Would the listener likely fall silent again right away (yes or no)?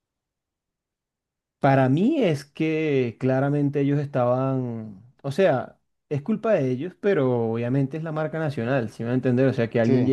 yes